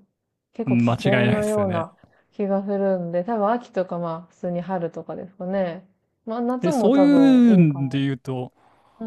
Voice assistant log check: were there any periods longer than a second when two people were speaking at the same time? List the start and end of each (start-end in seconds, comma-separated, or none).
0.7-1.9, 6.6-8.0